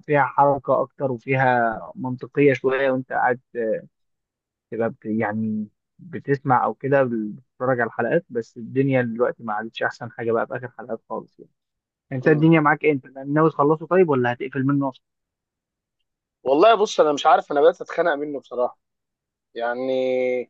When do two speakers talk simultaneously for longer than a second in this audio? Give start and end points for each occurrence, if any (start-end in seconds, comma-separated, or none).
none